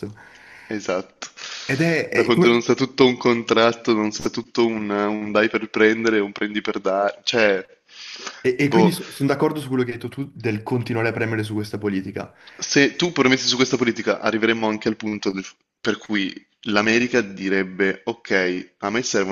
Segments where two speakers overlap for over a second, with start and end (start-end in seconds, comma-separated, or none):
none